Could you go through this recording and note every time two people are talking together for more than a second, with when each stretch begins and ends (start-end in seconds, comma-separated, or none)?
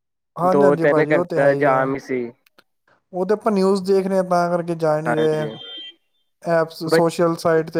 0.5-1.9